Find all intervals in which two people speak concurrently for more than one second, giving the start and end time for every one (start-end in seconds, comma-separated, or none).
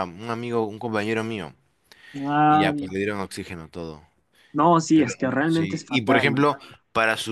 4.9-6.5